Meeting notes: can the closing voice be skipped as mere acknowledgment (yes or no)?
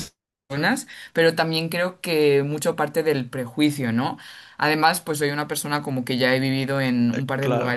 yes